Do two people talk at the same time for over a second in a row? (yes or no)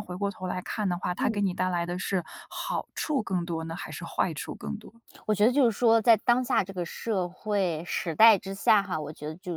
no